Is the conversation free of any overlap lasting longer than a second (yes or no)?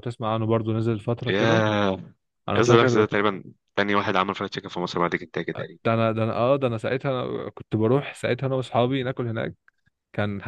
yes